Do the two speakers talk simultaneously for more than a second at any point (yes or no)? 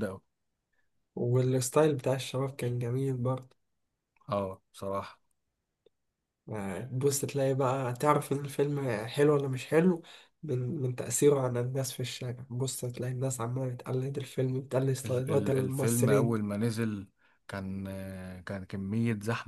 yes